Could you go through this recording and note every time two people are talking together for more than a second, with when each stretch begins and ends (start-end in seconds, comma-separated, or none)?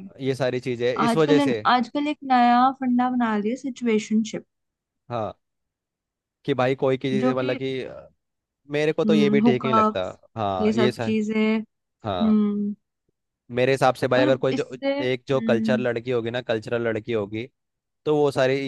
14.2-15.9